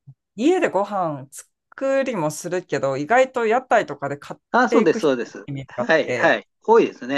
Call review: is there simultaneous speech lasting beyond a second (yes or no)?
yes